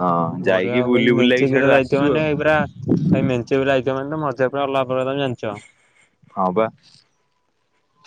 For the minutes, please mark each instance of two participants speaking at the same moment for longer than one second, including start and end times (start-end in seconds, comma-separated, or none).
0.5-2.2